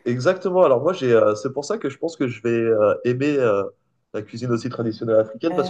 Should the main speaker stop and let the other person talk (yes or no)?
no